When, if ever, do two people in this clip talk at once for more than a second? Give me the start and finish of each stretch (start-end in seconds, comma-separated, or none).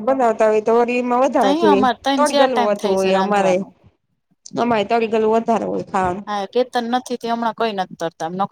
1.4-3.5